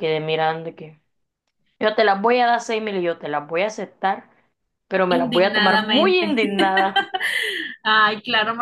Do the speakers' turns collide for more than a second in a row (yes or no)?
yes